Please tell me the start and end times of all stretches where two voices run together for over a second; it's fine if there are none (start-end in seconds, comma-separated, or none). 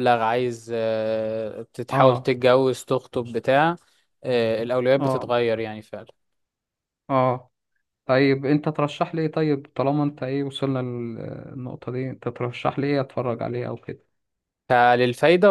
none